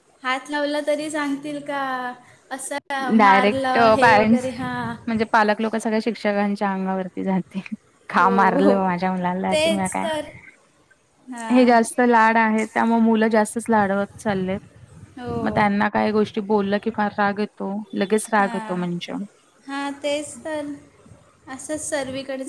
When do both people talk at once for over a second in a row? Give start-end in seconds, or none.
3.2-4.5